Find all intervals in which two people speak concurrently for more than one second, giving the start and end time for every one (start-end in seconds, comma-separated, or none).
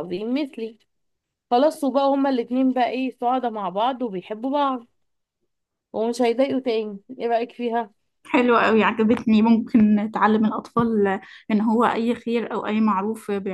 none